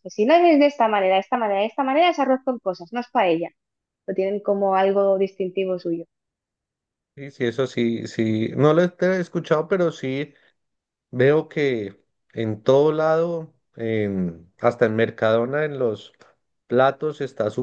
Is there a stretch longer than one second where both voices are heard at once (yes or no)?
no